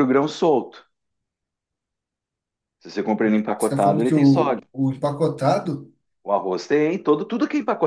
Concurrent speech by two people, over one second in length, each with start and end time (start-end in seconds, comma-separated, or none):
3.2-4.6